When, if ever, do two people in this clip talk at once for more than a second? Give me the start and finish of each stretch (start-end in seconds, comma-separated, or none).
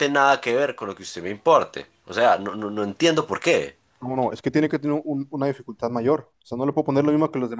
none